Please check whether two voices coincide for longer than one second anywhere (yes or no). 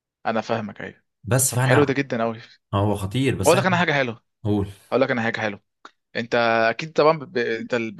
no